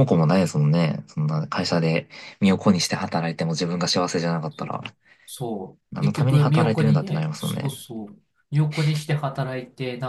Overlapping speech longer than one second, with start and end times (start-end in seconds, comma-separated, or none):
5.9-7.8